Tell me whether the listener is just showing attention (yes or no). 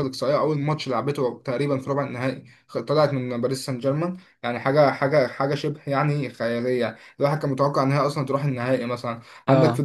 yes